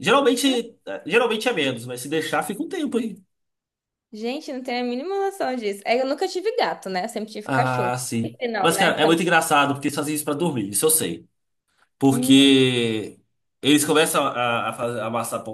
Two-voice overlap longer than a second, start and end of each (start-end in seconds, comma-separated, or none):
7.4-9.2